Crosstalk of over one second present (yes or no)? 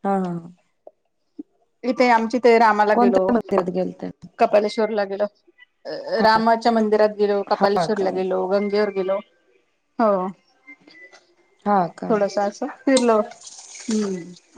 no